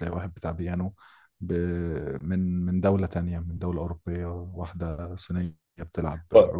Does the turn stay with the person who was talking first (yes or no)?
no